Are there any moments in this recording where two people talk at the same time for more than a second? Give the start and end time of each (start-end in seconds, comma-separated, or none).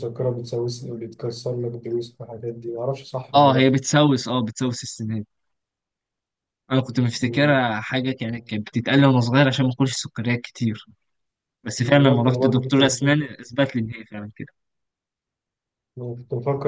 11.8-13.2